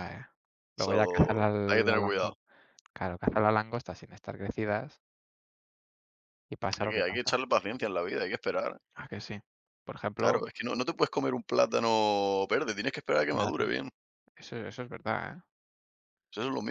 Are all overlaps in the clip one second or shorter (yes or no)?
no